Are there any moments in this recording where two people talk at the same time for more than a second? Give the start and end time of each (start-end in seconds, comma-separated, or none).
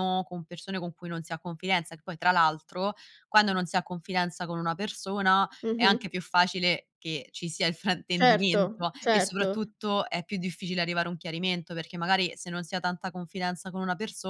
8.2-9.7